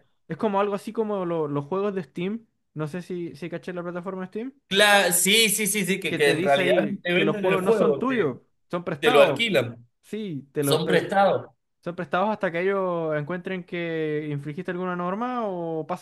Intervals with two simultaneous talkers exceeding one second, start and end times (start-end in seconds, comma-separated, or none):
6.1-8.3